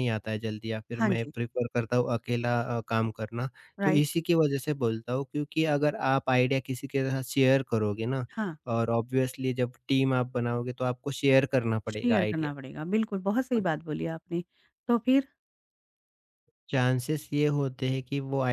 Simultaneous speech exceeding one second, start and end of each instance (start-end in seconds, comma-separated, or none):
none